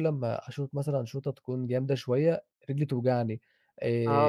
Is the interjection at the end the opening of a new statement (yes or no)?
yes